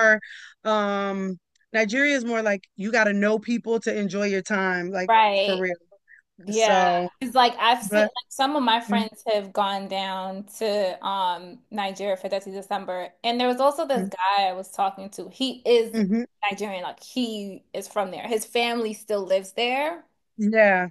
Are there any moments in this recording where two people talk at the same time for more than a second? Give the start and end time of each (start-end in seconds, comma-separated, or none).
none